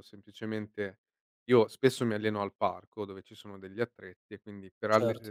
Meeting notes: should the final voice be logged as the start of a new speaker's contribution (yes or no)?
no